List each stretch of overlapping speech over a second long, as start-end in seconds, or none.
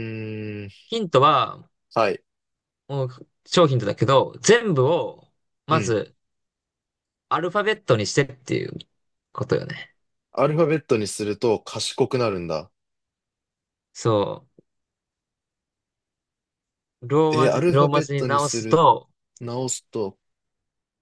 17.3-18.8